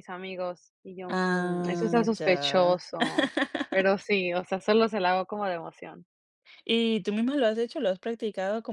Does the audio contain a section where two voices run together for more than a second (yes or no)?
yes